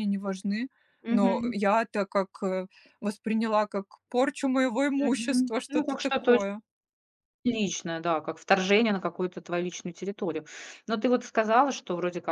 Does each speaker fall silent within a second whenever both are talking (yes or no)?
no